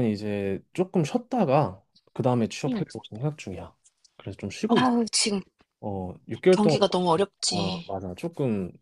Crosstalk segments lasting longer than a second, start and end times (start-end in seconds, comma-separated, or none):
none